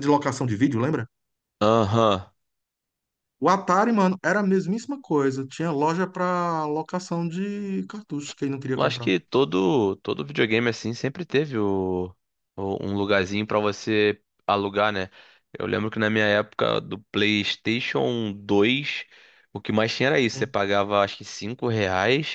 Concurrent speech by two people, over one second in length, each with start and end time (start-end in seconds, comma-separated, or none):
none